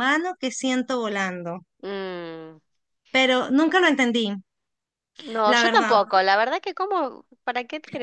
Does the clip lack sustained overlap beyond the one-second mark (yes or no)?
yes